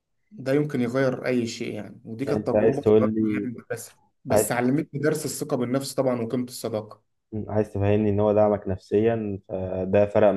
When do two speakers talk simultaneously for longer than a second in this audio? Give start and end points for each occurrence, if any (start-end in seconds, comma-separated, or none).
2.3-3.5